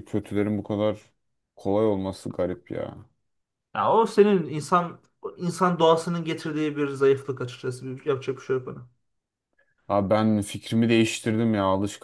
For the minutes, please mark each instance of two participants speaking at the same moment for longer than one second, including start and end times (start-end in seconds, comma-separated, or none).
none